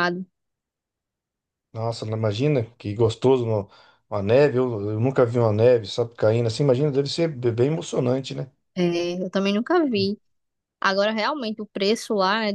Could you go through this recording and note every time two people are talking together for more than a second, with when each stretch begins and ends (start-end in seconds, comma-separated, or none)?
none